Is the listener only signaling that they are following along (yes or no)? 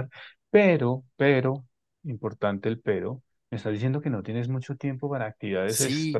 no